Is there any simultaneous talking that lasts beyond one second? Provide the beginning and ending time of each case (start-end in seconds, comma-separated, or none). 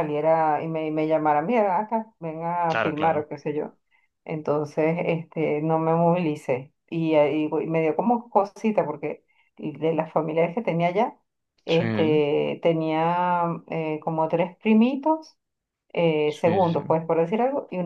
none